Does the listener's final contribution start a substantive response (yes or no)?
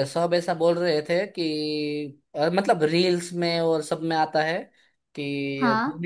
no